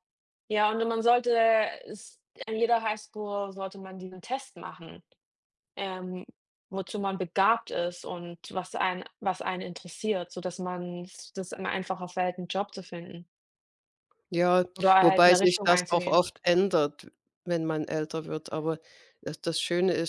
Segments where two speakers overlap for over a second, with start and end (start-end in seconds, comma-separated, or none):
15.0-16.2